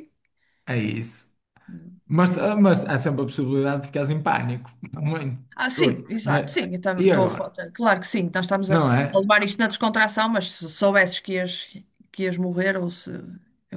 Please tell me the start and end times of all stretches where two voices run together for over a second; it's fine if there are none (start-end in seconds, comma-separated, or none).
5.5-7.6